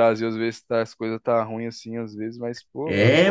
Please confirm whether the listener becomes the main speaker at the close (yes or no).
yes